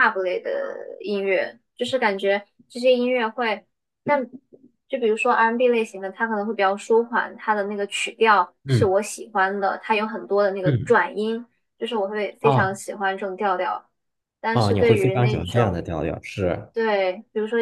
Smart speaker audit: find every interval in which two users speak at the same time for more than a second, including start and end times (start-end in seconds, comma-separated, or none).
14.5-15.8